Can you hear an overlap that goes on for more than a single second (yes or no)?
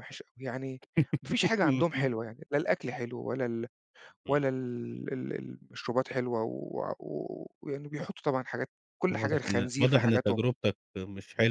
yes